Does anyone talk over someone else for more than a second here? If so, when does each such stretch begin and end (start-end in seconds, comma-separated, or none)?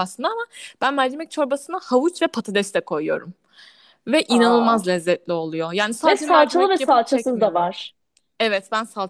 6.0-7.7